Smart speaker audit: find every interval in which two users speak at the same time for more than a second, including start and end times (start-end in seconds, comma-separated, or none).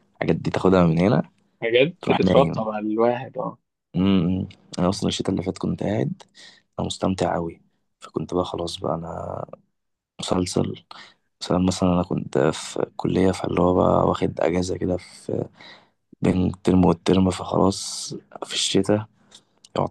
none